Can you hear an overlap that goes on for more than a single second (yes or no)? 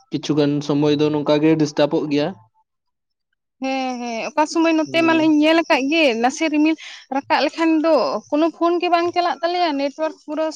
no